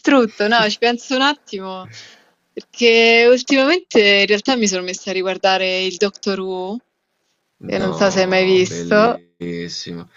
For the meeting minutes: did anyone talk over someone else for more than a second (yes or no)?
yes